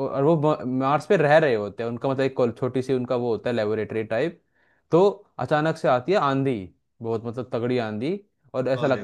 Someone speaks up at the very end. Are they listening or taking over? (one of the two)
listening